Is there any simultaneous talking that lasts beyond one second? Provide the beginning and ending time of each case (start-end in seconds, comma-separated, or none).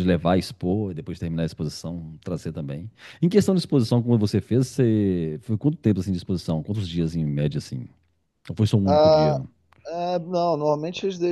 none